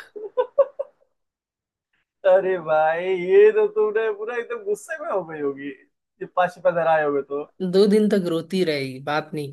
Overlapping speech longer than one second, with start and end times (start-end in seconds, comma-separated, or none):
none